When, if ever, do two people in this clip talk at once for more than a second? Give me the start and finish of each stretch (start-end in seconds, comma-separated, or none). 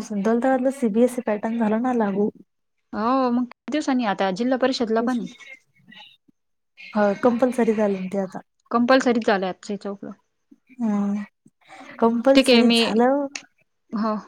none